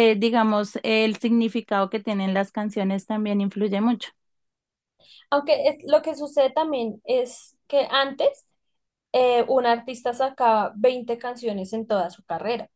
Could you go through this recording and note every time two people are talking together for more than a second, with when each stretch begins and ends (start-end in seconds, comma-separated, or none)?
none